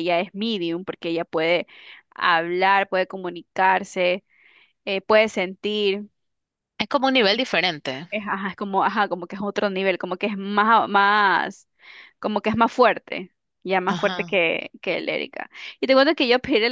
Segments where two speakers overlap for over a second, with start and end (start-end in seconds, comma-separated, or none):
none